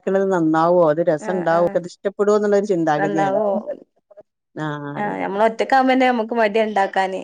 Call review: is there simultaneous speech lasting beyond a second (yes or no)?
no